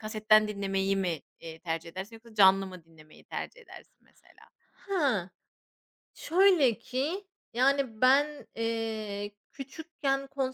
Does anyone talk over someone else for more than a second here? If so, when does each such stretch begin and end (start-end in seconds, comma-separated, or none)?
none